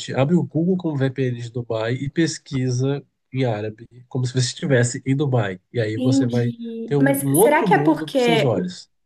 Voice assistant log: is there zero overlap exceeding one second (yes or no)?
no